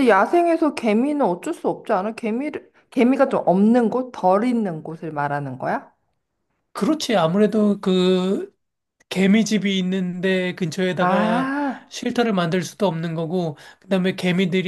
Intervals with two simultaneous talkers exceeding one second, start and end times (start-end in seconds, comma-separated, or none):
none